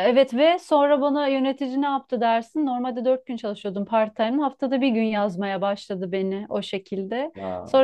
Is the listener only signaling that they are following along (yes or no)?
yes